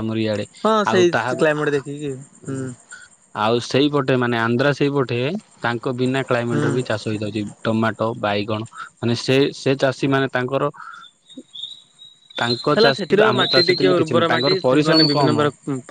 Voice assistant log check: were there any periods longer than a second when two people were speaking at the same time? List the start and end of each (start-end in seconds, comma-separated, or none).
12.7-15.3